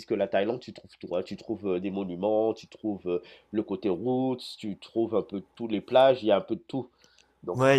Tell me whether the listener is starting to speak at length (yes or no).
yes